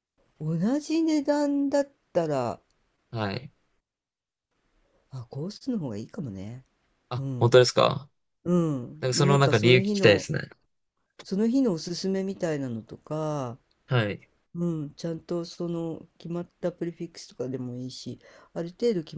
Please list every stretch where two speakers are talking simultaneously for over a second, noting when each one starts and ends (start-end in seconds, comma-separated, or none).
9.0-10.2